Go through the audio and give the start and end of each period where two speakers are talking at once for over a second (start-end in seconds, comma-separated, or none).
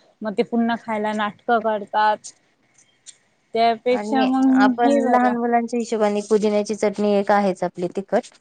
none